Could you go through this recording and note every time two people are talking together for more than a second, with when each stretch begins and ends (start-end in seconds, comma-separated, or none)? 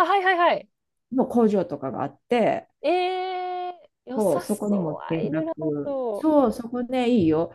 4.2-6.3